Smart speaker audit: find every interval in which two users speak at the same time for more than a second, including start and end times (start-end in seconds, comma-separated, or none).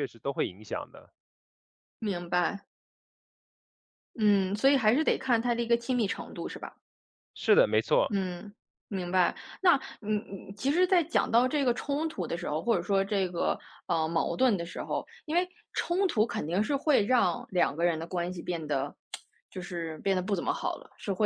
none